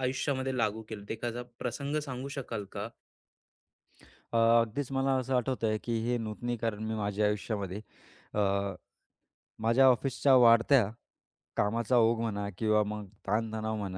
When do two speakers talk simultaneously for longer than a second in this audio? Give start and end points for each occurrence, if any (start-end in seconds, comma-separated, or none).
none